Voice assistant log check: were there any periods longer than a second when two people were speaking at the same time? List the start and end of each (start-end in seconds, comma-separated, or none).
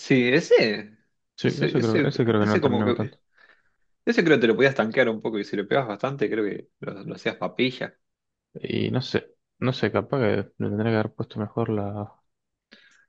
1.4-3.2